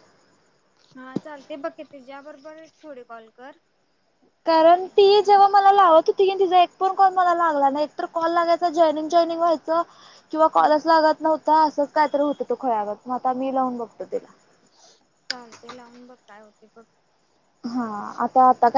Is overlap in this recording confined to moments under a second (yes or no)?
yes